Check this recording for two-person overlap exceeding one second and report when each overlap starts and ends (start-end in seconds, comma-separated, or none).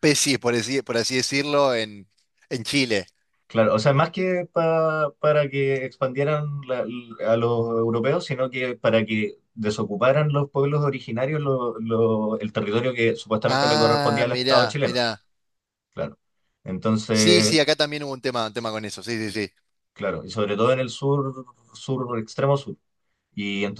13.5-15.0